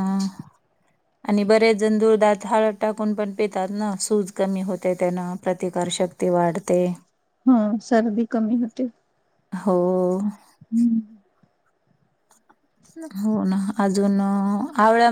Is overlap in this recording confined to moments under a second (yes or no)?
yes